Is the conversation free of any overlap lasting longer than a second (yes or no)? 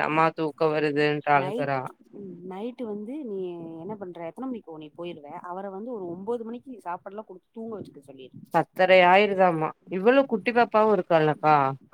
yes